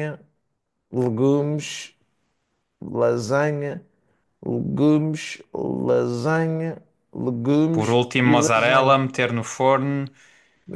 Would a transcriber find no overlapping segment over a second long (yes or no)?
no